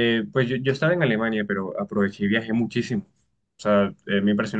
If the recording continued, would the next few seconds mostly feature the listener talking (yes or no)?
no